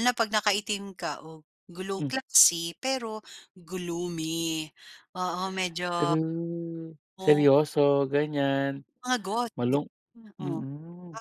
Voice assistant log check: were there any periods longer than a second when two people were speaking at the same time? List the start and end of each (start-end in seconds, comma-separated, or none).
none